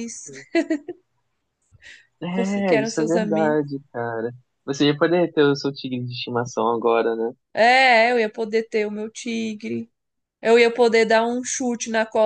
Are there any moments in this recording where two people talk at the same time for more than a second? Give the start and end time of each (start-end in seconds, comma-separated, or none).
2.3-3.6